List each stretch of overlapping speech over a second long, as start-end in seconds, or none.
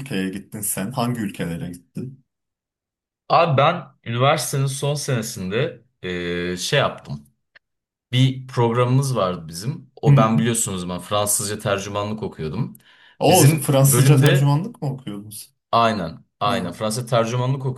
13.3-14.6